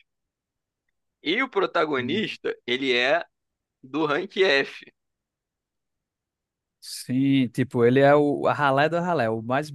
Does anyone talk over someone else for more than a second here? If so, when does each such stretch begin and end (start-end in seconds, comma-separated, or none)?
none